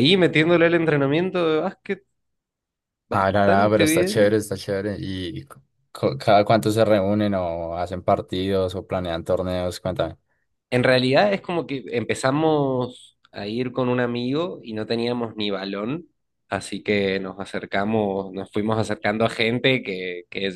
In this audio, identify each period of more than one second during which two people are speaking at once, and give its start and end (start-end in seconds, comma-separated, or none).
3.1-4.3